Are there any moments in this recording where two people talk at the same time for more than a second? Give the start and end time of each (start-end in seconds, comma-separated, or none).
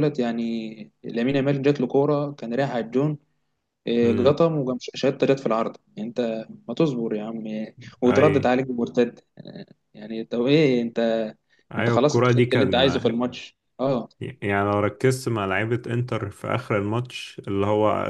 11.8-13.1